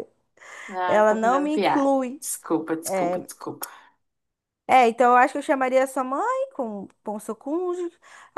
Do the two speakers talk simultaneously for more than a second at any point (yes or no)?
yes